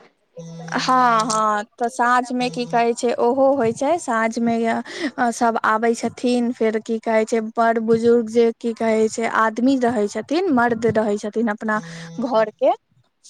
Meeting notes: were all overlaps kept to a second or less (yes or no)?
no